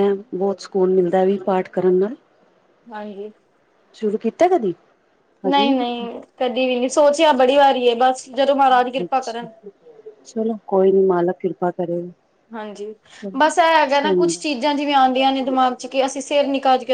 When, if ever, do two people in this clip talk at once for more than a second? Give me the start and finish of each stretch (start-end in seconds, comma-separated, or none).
none